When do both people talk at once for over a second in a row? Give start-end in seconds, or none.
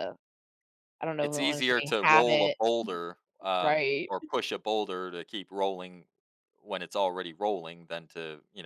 1.2-2.6